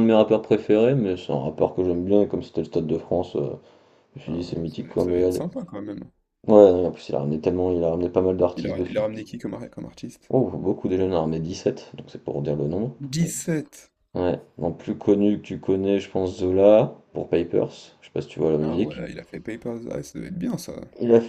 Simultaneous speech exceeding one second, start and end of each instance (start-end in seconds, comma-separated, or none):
4.3-5.5